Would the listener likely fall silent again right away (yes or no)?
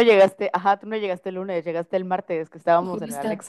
no